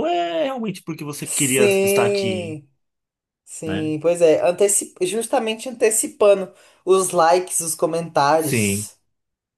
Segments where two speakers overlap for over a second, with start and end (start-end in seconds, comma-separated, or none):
1.2-2.6